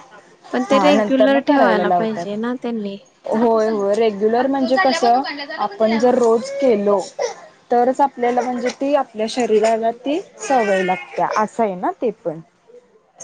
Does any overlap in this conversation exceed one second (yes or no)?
yes